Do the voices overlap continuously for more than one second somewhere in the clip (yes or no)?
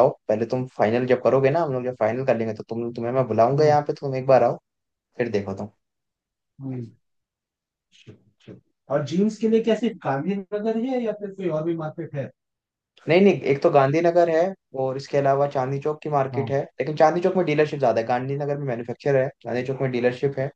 no